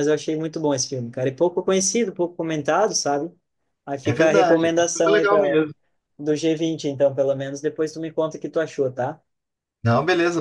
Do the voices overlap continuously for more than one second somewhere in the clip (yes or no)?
yes